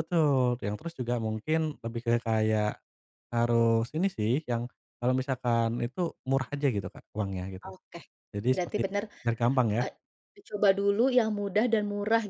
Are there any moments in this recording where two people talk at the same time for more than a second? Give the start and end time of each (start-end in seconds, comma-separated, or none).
none